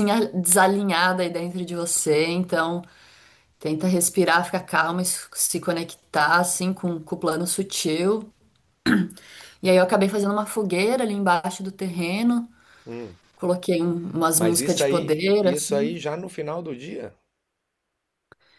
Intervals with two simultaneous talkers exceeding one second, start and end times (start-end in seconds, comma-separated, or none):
14.3-16.0